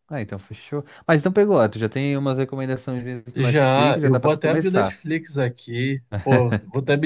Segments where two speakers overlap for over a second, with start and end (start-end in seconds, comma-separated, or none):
3.3-5.0